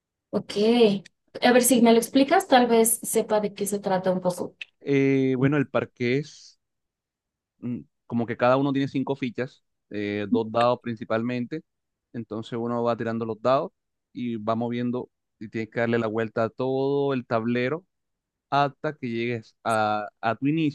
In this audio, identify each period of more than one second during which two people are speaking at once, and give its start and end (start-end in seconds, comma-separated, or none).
none